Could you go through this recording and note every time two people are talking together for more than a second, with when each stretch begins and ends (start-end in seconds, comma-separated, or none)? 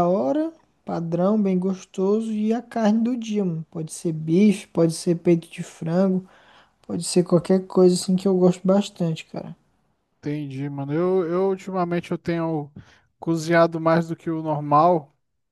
none